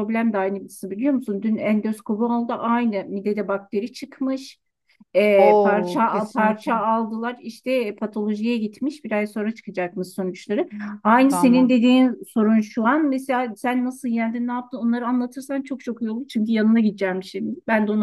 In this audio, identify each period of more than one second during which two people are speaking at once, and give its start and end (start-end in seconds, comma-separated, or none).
5.5-6.8